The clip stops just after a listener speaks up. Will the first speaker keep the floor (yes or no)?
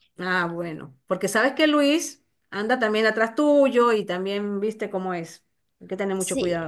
no